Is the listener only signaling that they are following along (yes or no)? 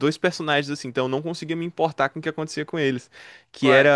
yes